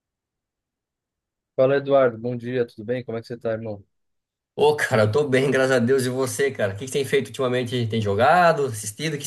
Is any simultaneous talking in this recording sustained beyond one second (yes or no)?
no